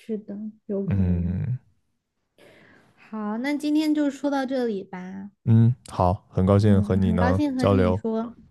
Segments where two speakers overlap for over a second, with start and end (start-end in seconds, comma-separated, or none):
6.6-8.0